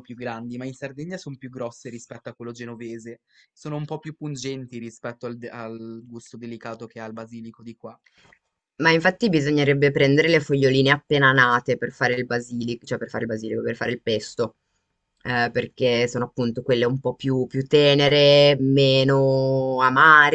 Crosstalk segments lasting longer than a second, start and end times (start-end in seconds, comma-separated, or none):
none